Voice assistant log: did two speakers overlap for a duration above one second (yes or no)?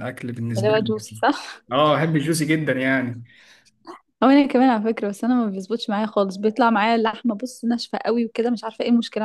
no